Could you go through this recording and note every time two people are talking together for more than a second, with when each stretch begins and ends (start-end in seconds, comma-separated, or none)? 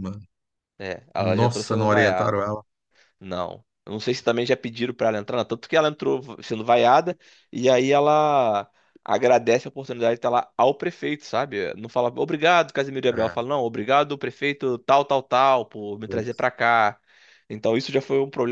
1.1-2.4